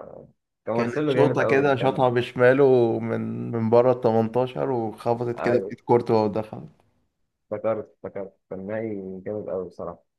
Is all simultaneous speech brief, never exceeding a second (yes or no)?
no